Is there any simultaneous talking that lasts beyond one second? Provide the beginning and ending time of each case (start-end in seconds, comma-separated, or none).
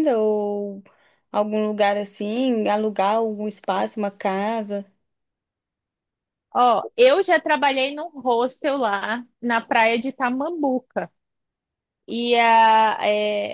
none